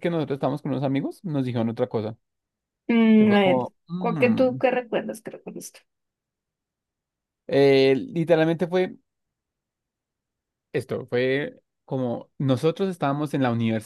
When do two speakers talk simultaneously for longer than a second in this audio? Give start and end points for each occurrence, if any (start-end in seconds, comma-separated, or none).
3.2-4.6